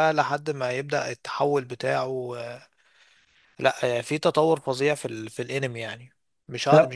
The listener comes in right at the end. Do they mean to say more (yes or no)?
no